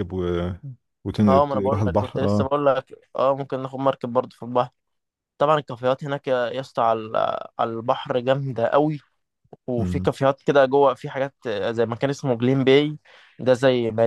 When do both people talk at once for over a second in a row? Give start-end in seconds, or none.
1.3-2.5